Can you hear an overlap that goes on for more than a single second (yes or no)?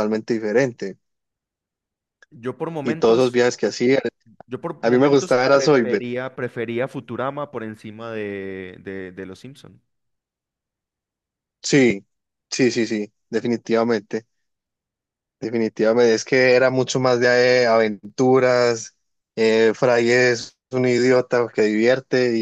yes